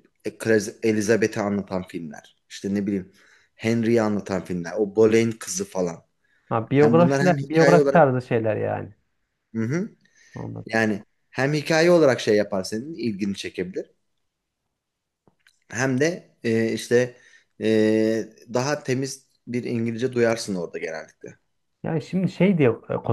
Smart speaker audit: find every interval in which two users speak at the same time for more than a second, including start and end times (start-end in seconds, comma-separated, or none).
6.7-8.0